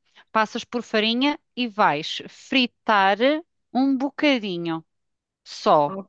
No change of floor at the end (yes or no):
no